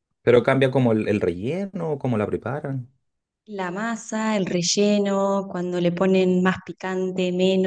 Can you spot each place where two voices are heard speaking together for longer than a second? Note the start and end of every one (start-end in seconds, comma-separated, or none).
none